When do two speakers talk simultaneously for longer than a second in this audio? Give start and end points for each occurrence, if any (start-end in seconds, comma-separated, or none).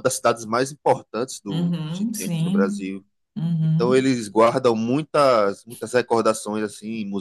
1.5-2.9